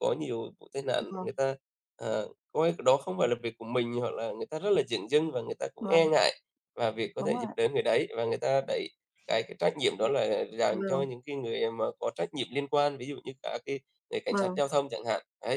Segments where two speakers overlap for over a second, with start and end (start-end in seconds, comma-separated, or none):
none